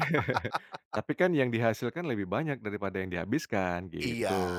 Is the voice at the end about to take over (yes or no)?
yes